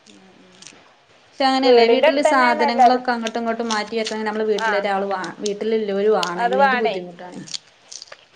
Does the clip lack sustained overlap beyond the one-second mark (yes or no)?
no